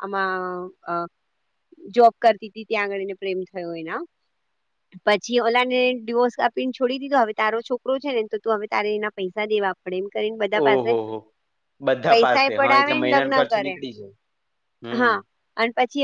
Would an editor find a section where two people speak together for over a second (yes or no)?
yes